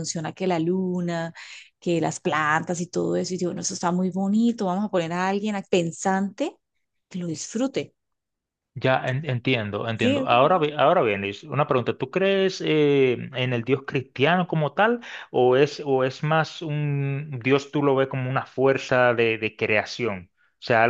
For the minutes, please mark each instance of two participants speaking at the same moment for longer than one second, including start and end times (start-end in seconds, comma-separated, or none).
none